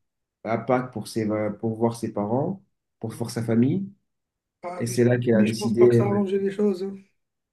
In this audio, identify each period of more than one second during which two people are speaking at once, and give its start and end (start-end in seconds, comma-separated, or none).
4.8-6.2